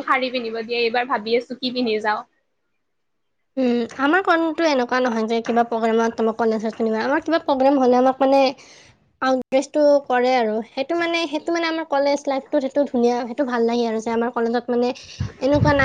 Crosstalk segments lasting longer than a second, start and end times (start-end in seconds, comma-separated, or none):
none